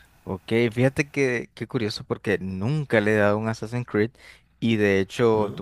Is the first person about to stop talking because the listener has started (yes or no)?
no